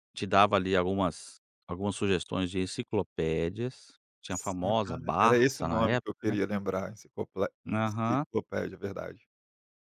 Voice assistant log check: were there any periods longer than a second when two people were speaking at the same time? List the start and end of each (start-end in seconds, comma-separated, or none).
4.3-6.4